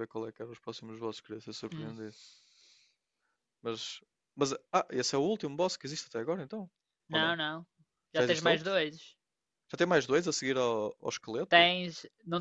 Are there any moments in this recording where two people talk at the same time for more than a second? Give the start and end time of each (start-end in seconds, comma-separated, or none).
none